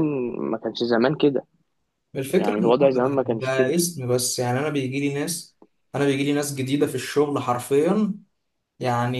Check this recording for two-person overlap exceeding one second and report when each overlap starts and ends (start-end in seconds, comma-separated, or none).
2.4-3.7